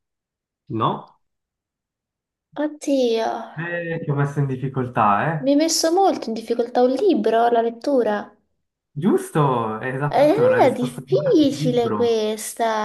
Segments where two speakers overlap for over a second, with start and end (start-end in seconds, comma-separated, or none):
10.1-12.3